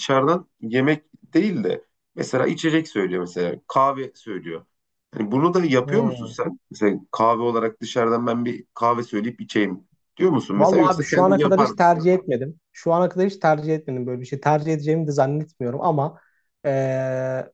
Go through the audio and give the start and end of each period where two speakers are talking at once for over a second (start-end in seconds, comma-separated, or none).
10.6-12.1